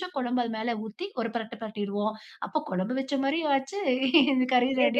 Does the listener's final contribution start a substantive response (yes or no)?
yes